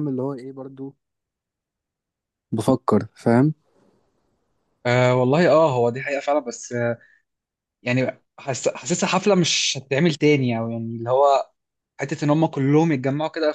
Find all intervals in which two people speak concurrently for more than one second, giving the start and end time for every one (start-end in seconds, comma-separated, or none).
none